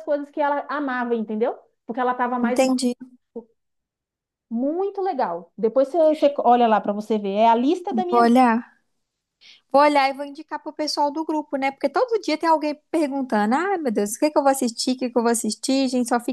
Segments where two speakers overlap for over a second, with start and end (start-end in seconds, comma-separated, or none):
none